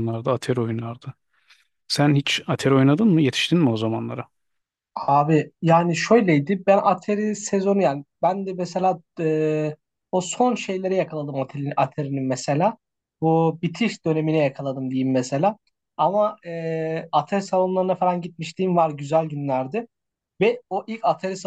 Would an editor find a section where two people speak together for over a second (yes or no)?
no